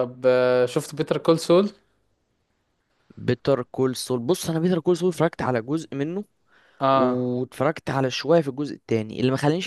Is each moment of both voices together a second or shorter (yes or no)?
yes